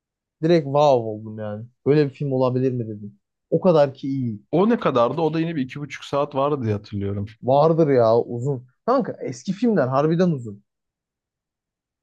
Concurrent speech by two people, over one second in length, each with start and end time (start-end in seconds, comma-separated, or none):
none